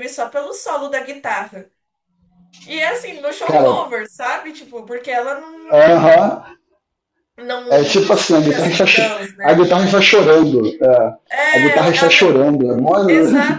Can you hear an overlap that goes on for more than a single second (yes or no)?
yes